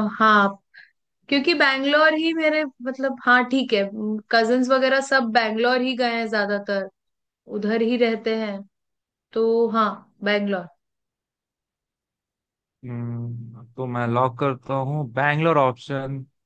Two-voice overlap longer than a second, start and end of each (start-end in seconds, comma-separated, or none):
none